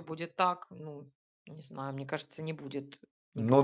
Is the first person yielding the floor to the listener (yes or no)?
yes